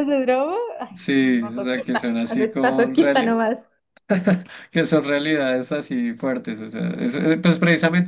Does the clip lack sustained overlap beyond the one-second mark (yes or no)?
no